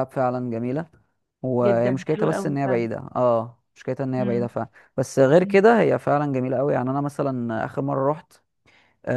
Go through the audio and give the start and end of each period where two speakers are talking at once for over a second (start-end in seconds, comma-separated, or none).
1.6-2.9